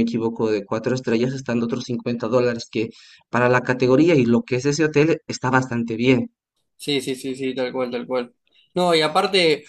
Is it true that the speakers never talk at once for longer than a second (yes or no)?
yes